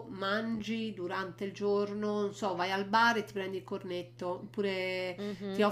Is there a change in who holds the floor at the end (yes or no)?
no